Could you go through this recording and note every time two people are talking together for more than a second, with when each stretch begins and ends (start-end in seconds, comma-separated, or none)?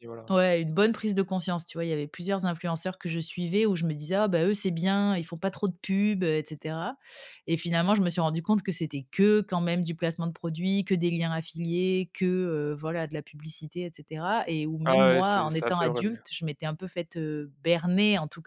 14.8-16.2